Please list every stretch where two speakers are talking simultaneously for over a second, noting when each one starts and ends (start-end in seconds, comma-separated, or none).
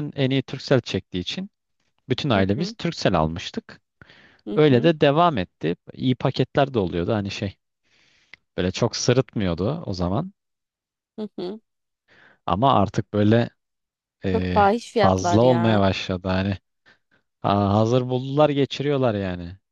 14.3-15.8